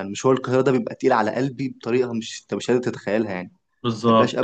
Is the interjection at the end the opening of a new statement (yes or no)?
yes